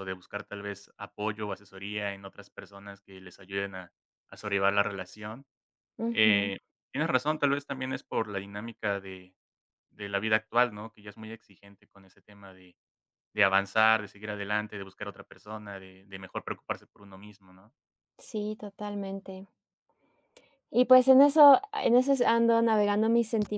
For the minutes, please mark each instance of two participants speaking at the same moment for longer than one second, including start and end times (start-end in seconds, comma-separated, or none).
none